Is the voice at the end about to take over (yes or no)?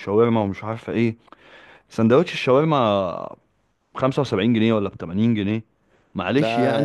no